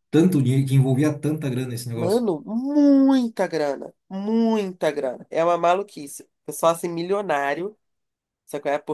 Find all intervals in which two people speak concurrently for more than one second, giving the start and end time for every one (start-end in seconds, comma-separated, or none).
none